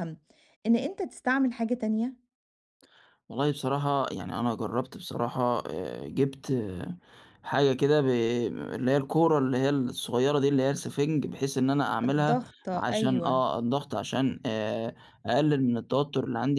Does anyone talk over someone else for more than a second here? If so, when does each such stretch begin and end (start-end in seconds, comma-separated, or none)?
12.1-13.4